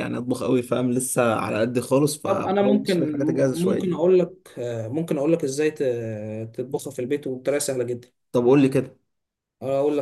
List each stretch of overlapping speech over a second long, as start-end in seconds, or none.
2.2-3.9